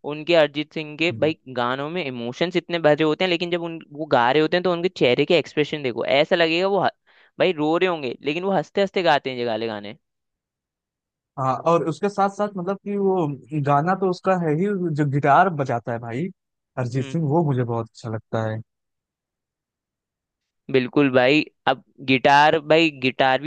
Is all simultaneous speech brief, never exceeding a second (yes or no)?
yes